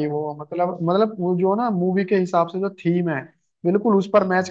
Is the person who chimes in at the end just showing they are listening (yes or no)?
yes